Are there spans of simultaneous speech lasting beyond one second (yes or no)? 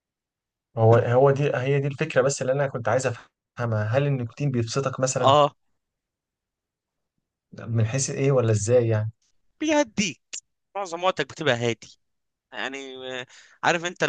no